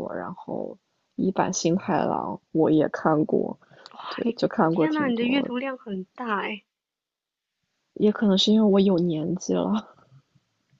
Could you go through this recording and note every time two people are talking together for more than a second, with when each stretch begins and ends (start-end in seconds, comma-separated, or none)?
4.2-5.5